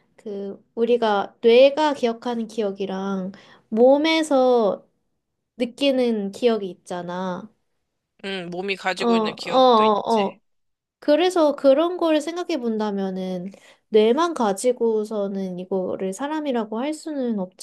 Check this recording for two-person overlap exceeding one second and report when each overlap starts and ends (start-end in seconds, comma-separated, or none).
9.0-10.4